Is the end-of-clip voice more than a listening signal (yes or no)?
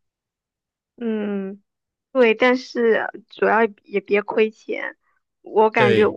no